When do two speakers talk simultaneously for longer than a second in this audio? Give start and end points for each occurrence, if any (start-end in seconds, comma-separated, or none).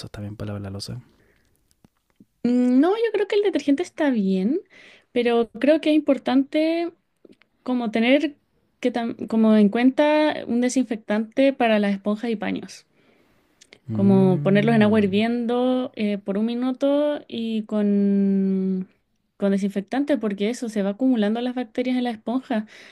13.9-15.1